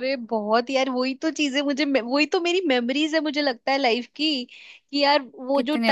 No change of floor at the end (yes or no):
yes